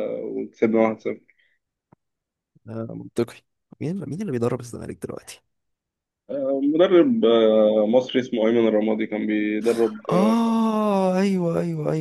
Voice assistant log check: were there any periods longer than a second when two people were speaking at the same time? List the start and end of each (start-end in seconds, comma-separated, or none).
none